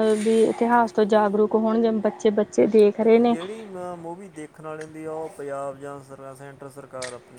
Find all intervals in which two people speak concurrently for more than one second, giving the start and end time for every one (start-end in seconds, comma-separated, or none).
none